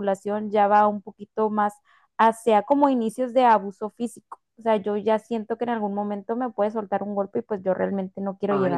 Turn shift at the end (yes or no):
yes